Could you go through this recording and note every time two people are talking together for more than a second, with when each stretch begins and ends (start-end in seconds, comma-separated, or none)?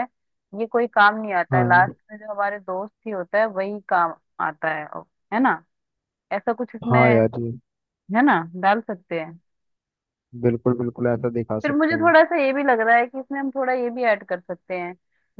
none